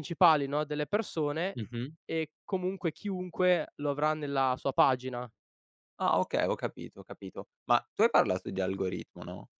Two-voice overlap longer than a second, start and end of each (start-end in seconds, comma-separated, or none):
none